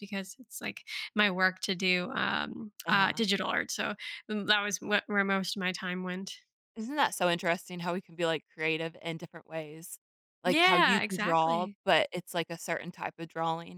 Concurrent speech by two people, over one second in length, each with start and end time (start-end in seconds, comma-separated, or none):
10.4-11.8